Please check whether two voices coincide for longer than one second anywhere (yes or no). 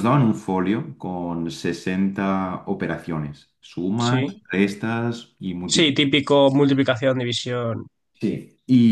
no